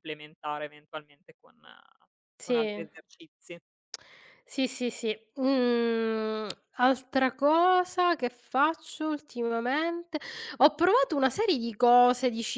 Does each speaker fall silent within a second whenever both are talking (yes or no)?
yes